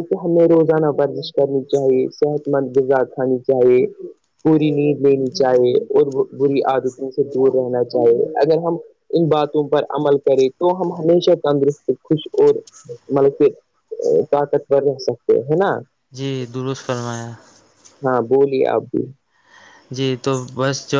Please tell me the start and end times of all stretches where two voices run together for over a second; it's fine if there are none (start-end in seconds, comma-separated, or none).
none